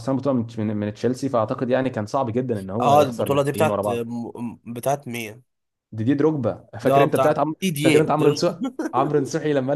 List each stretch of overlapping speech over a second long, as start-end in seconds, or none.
2.8-4.0, 6.8-8.6